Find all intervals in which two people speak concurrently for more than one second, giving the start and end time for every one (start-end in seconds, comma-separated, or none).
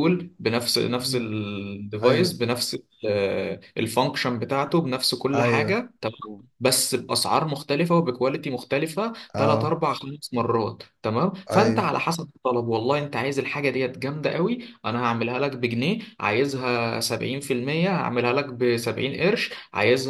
none